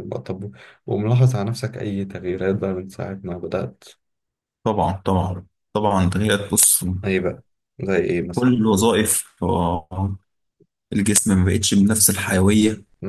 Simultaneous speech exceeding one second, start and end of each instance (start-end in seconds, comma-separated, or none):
none